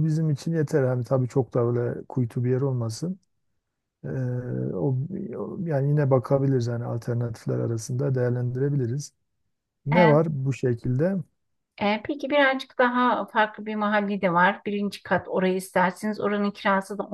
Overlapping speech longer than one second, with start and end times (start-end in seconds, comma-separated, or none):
none